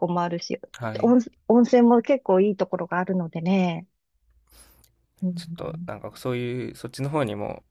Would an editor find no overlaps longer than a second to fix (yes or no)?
yes